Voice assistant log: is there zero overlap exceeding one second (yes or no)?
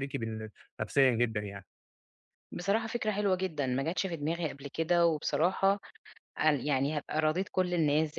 yes